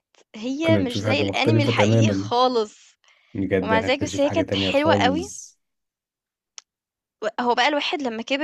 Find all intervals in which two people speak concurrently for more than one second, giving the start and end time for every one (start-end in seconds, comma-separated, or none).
0.6-2.3, 3.6-5.3